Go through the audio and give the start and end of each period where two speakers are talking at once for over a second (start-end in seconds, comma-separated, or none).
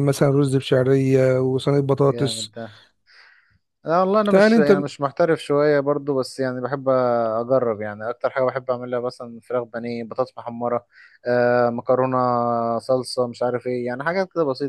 none